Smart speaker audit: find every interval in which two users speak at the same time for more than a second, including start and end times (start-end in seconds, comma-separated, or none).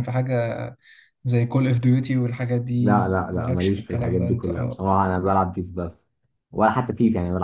2.8-4.8